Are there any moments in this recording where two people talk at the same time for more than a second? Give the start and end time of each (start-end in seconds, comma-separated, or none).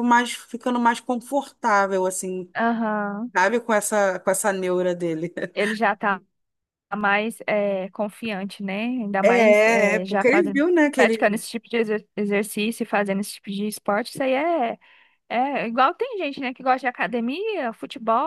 9.2-11.4